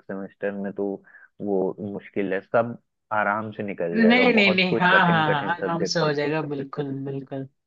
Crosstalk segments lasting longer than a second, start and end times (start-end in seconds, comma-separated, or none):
3.9-6.2